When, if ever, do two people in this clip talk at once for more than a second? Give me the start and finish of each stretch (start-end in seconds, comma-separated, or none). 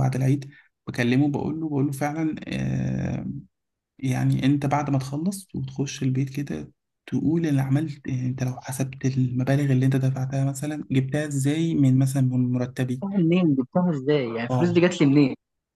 none